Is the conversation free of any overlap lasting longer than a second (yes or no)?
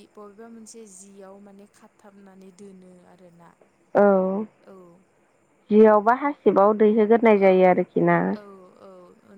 yes